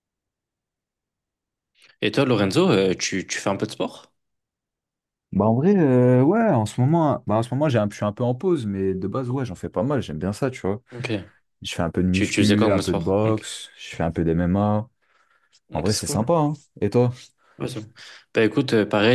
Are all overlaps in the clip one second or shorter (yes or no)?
no